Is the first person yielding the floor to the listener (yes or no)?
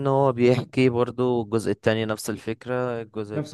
no